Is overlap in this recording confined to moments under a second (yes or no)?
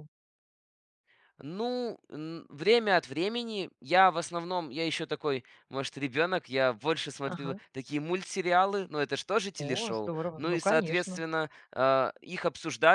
no